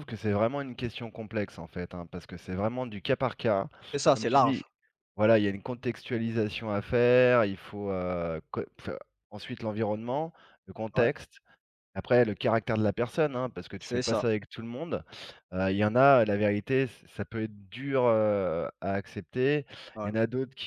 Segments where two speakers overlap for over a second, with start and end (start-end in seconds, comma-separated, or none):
none